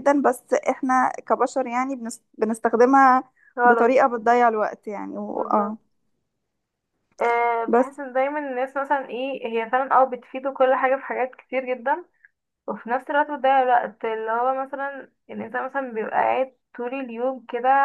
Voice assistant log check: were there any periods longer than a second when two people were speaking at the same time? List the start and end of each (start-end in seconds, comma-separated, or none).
none